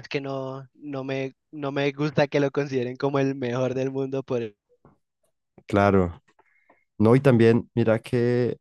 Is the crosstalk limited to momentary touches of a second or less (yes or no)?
yes